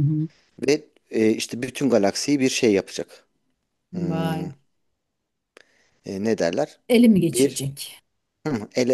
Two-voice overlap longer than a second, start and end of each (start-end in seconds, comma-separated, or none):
none